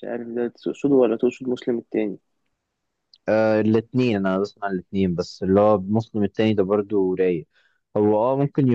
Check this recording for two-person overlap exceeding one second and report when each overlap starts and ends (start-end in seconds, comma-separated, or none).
none